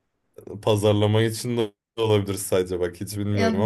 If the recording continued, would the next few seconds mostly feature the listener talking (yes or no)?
yes